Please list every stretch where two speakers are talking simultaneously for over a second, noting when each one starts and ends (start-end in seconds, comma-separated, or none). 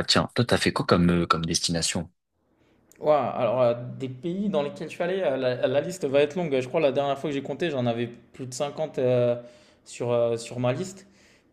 none